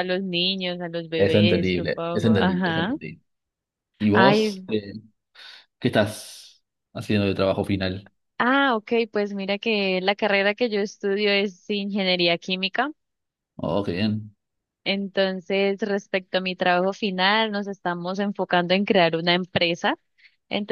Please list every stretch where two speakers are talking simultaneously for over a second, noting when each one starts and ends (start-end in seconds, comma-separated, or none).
1.2-2.9